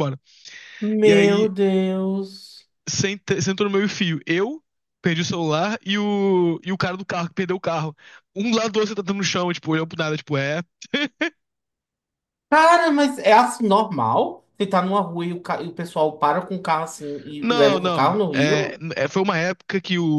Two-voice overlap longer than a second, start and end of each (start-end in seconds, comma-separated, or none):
17.4-18.8